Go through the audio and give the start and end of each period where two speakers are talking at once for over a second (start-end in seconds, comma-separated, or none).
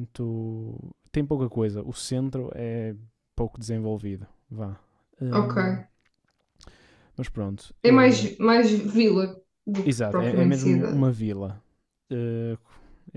9.8-11.1